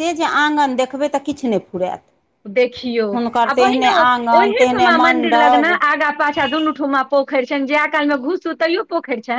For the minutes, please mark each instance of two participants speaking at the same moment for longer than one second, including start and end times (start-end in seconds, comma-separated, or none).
3.5-5.7